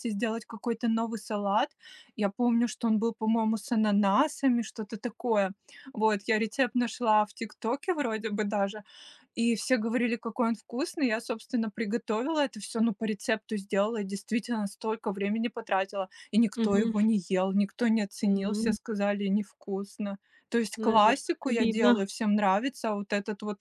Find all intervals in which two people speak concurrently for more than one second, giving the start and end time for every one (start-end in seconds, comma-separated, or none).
20.8-22.0